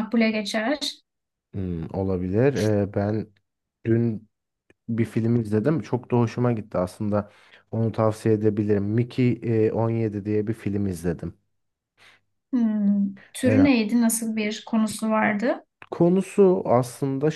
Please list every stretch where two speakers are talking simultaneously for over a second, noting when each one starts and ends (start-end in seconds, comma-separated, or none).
none